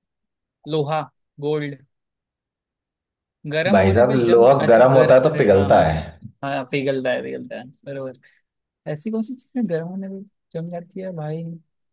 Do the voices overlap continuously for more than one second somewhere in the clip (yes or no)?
yes